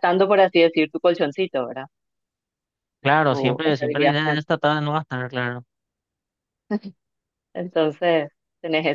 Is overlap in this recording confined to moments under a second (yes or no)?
no